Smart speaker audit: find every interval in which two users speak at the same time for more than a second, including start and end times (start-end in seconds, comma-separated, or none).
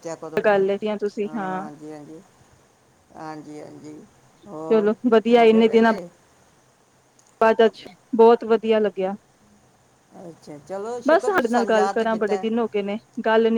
11.1-12.5